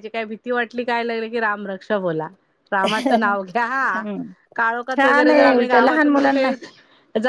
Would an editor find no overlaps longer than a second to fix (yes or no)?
no